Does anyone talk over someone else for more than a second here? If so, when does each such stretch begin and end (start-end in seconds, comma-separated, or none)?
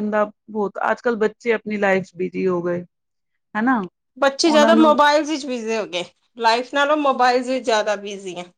none